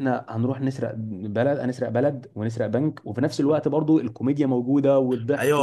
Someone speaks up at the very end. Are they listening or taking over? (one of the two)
taking over